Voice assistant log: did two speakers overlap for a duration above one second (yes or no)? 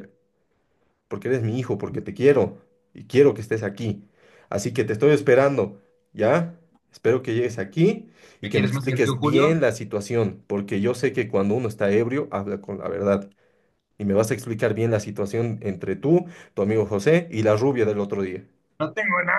yes